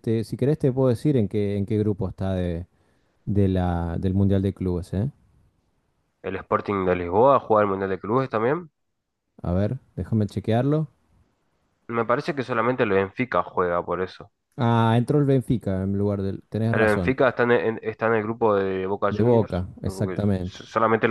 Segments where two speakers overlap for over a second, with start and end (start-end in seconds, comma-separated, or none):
19.1-20.6